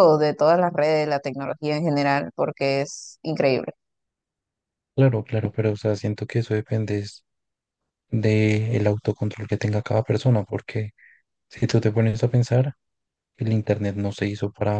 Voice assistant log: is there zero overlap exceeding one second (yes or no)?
yes